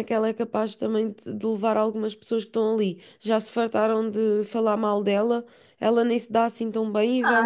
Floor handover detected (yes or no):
yes